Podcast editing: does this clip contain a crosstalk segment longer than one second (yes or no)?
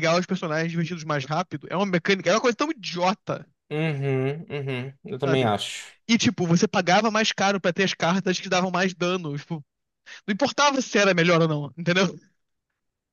no